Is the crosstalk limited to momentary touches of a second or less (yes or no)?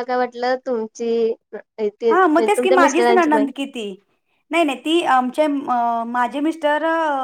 no